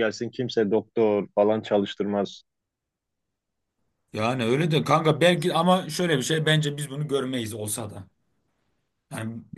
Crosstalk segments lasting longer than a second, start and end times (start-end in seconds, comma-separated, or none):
none